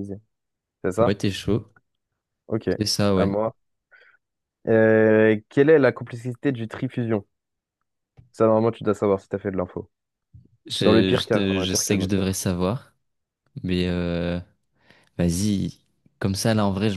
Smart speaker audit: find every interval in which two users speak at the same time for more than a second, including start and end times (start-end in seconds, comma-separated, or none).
10.8-12.4